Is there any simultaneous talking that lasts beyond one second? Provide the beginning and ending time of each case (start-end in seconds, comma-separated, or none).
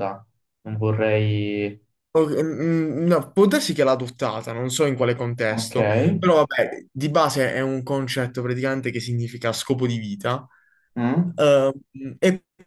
none